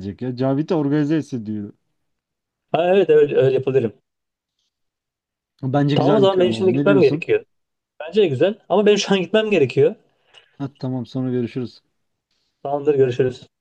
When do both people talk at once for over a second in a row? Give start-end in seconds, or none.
5.7-7.2